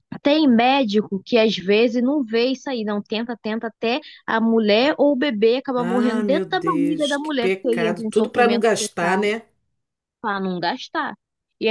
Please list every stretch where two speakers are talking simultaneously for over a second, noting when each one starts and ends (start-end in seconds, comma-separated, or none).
5.8-9.3